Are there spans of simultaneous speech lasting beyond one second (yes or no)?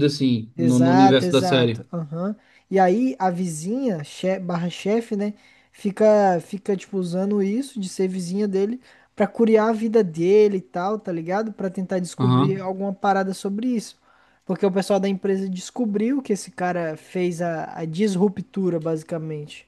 yes